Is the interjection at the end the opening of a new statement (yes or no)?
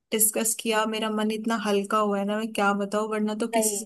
no